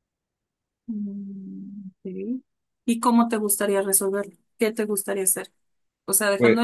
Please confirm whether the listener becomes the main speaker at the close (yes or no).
no